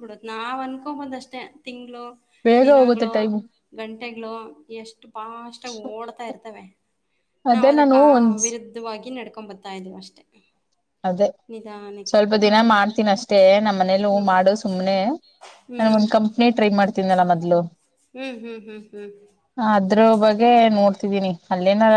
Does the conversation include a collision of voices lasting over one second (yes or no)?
no